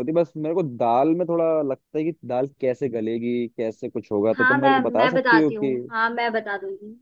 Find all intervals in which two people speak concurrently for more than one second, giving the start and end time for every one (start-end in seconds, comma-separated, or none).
4.4-5.8